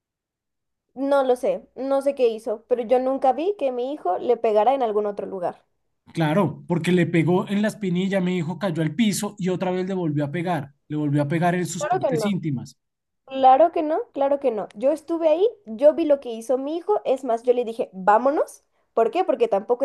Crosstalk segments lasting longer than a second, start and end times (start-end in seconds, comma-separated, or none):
none